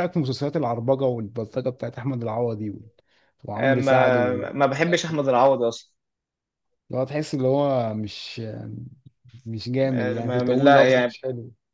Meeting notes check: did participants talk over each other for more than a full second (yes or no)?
yes